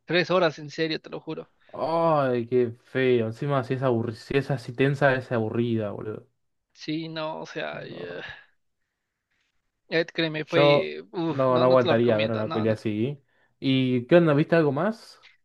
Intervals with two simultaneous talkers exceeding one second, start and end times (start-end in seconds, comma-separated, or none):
10.4-12.8